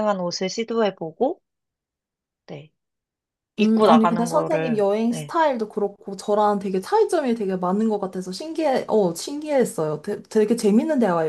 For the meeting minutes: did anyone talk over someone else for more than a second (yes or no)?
yes